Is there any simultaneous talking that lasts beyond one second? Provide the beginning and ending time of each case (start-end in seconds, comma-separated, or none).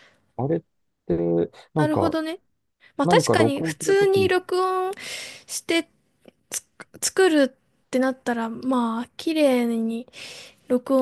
3.0-4.3